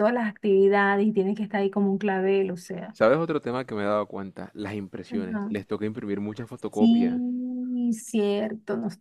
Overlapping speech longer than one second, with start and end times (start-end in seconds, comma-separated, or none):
none